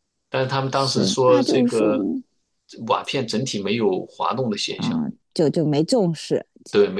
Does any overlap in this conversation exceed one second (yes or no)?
yes